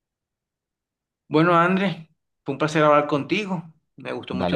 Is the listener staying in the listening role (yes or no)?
yes